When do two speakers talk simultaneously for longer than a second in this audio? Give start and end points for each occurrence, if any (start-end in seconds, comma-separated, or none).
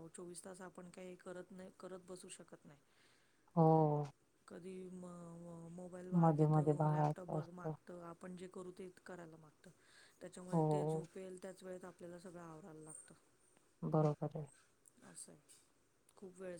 6.2-7.7